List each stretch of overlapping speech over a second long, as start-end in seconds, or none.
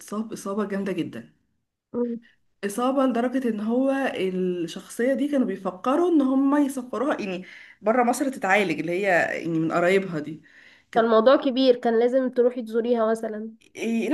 none